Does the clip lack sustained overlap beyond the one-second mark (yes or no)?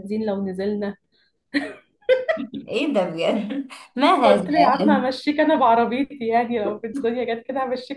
yes